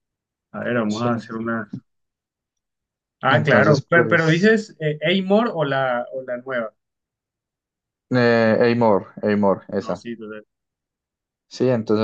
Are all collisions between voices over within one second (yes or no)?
no